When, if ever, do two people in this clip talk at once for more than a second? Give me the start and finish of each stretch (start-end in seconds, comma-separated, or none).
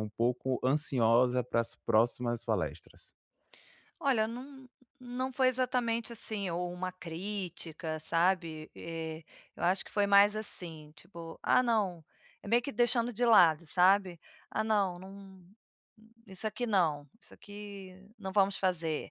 none